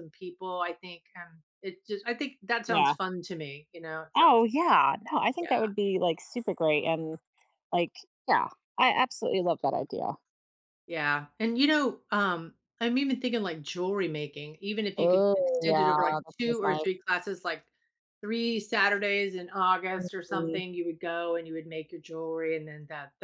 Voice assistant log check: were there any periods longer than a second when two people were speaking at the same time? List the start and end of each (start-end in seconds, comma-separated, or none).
15.0-16.9